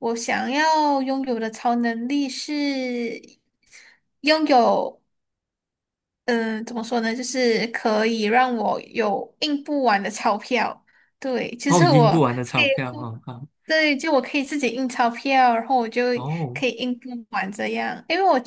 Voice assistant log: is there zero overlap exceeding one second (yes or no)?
no